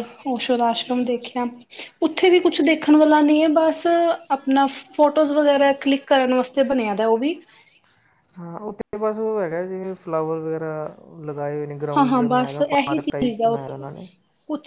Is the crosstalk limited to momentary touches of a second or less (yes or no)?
no